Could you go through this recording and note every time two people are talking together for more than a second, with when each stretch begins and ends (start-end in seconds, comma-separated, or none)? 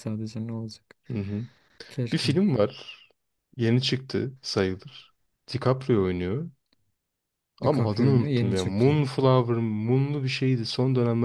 7.6-8.9